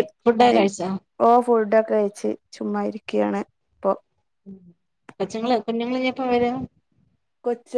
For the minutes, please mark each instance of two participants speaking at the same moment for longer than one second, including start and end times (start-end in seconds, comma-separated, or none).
none